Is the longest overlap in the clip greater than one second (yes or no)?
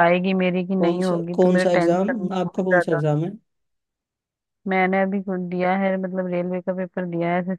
yes